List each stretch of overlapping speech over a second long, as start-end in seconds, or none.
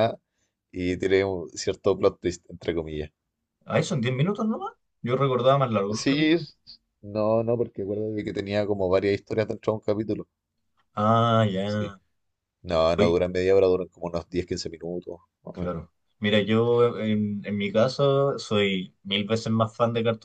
none